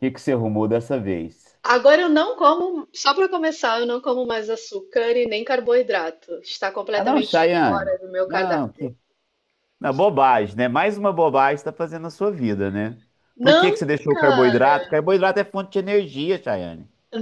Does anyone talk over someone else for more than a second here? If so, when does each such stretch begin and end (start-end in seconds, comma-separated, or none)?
7.0-8.9